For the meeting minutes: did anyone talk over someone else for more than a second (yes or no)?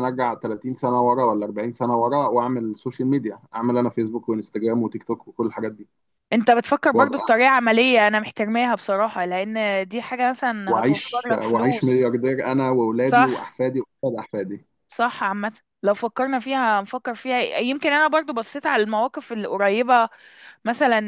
yes